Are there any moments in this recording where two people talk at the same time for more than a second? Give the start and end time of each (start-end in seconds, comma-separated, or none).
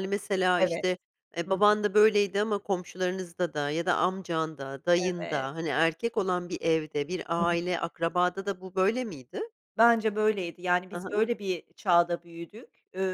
none